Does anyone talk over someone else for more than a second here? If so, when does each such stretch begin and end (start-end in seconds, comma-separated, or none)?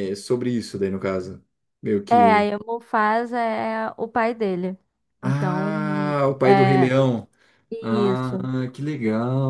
5.2-6.9